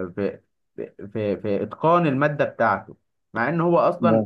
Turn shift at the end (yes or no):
no